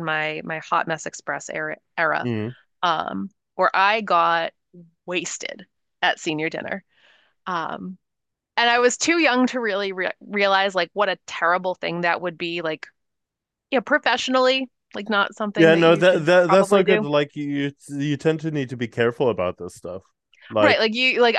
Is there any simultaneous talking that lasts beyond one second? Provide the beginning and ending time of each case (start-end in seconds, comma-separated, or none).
15.6-17.1